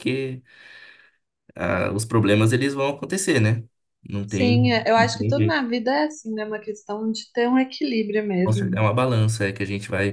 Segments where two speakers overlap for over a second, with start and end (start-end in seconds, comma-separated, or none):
4.2-5.6